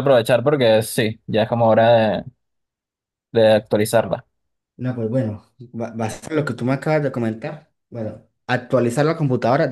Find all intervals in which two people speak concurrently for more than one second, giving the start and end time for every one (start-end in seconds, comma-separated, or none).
none